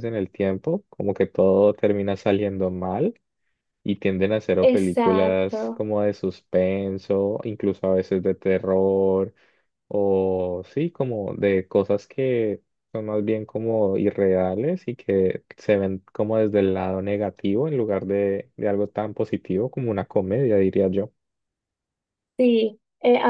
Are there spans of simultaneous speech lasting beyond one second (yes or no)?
yes